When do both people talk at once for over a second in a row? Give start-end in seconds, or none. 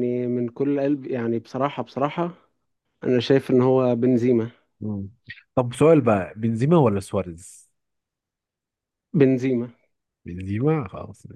none